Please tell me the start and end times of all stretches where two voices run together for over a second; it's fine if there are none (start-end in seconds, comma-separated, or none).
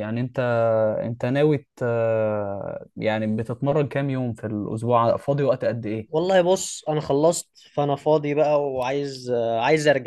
none